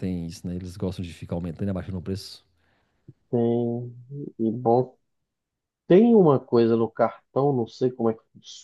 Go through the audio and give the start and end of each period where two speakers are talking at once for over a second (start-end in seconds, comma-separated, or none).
none